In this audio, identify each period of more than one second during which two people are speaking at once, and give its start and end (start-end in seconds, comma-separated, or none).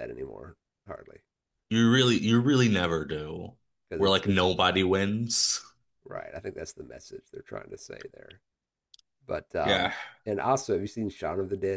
none